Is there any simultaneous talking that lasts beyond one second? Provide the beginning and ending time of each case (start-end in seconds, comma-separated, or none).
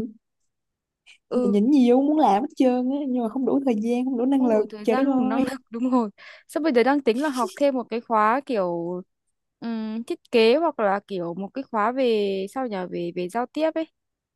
4.3-5.5